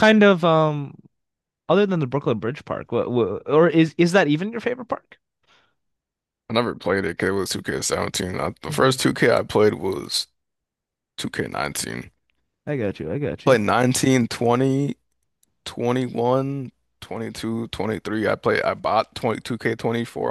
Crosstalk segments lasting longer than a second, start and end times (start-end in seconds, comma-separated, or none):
none